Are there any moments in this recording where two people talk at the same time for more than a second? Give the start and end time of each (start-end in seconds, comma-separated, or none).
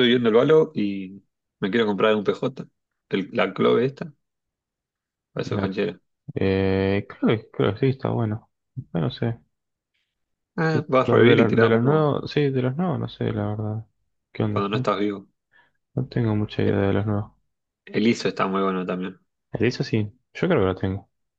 10.7-12.1